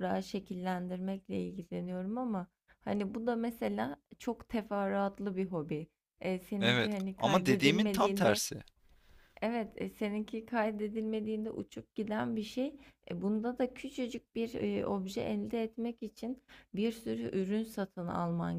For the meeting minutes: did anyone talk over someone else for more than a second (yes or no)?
yes